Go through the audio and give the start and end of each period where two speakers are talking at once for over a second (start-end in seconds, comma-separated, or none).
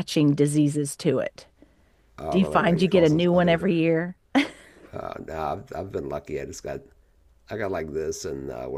2.3-3.7